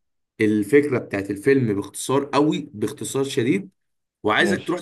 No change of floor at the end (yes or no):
yes